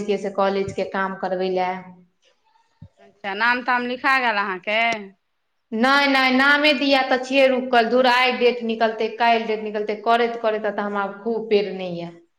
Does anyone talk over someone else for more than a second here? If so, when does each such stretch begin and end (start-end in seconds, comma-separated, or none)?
none